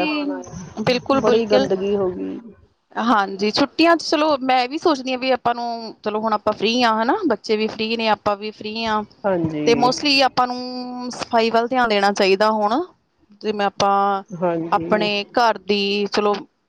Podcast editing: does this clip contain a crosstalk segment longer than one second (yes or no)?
no